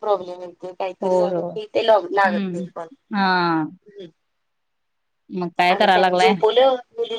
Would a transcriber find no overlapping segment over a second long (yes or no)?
yes